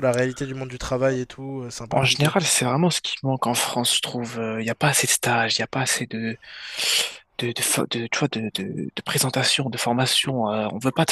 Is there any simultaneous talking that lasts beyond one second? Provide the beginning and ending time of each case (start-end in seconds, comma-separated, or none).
none